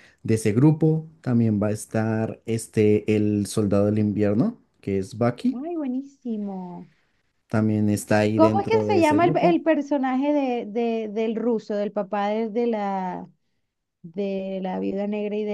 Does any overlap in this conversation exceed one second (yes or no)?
yes